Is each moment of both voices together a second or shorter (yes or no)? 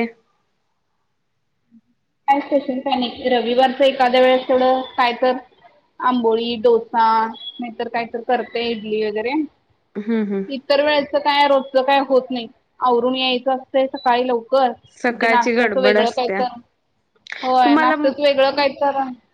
no